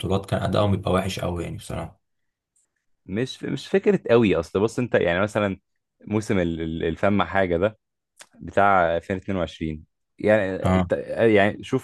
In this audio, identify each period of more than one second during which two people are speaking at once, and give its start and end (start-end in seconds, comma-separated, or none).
none